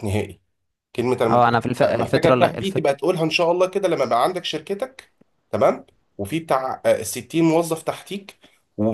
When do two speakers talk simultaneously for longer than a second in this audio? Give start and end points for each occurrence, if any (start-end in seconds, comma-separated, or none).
1.3-2.9